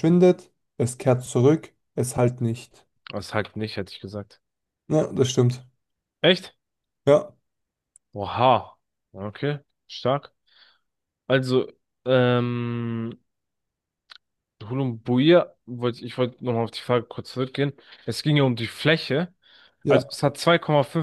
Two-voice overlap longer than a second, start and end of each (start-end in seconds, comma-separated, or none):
none